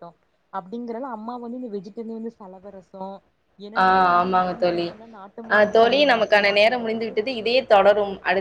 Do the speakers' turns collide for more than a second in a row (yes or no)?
yes